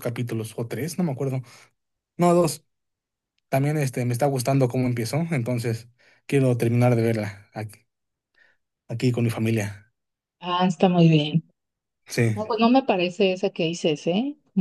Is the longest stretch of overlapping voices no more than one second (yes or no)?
yes